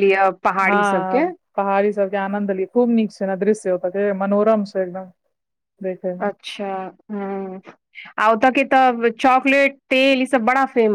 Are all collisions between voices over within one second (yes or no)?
yes